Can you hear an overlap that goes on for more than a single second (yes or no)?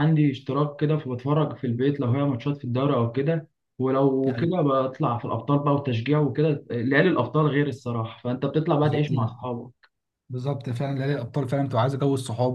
no